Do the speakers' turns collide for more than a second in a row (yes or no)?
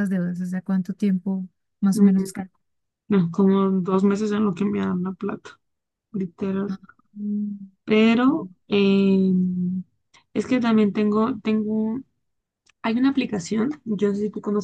no